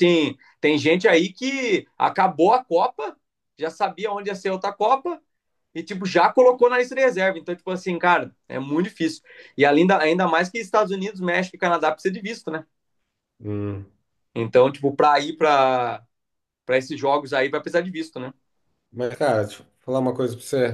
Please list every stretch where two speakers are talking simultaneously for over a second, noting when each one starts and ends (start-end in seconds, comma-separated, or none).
none